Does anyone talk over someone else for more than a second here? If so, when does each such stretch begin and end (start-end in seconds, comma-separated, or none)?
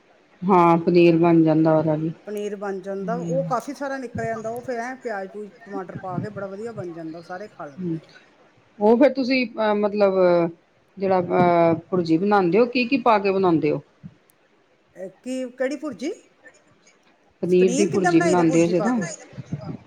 17.9-19.1